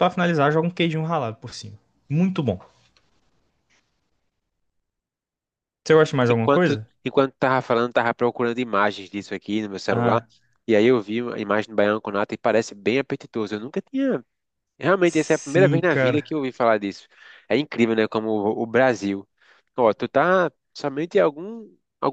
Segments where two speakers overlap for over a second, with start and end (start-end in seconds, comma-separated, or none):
15.0-16.3